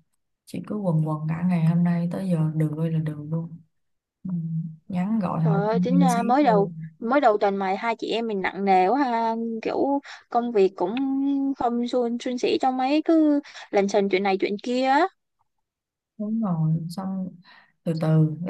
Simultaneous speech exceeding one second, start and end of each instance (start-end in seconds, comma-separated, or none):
5.4-6.7